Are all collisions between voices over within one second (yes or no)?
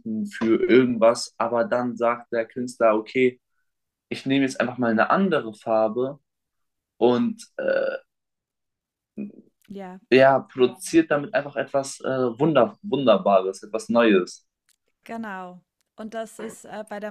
yes